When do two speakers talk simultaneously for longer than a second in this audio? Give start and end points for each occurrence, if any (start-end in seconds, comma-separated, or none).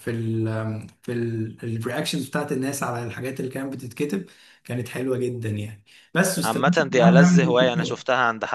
6.4-8.0